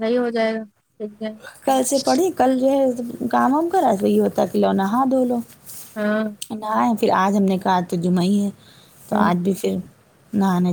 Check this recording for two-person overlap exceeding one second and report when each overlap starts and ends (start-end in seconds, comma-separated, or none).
none